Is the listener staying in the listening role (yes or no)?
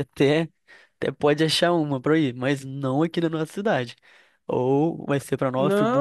no